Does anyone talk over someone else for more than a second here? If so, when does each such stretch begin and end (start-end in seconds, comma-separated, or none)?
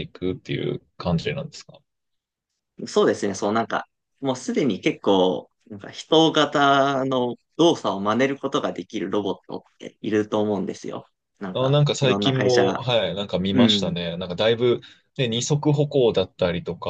11.5-12.8